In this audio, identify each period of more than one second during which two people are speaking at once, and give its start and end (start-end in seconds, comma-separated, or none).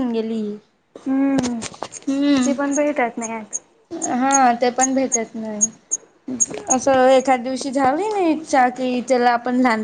none